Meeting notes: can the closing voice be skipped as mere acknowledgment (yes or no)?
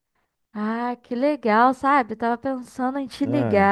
yes